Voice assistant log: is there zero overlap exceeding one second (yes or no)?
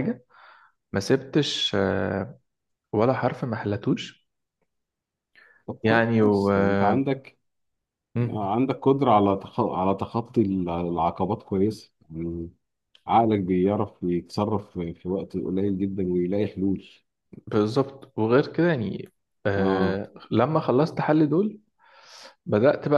no